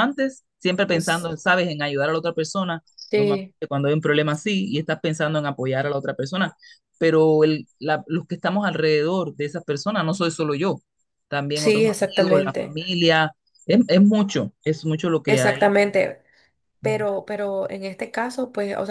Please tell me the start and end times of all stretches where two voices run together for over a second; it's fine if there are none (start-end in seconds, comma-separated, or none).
11.5-12.8